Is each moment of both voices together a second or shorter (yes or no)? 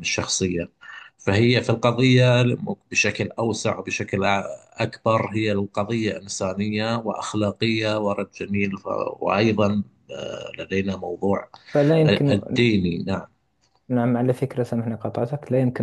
yes